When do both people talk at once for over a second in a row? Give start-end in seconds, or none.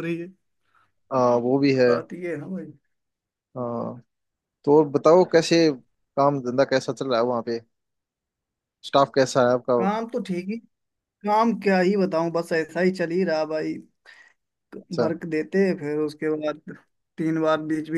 none